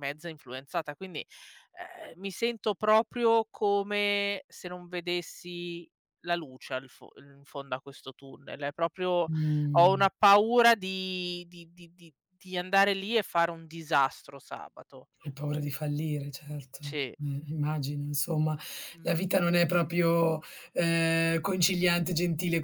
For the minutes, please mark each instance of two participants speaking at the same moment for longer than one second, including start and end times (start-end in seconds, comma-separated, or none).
none